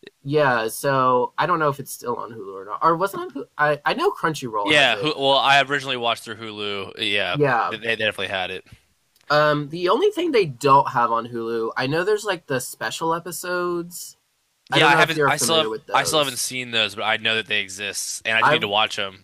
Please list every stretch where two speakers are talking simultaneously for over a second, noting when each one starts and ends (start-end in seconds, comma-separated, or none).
14.7-16.5